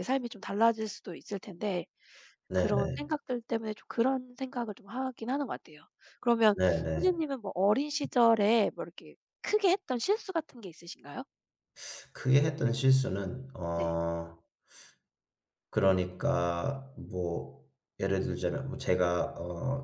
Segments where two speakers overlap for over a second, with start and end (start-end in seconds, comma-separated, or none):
none